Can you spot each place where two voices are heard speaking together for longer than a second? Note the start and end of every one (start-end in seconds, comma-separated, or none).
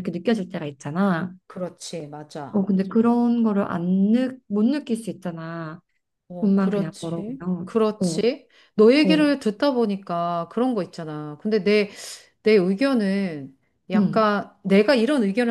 6.4-8.2